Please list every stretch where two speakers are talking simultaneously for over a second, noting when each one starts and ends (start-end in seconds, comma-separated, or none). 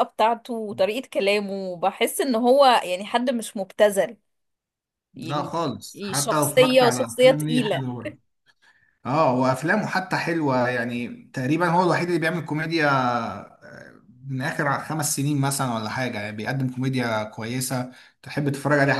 6.1-7.8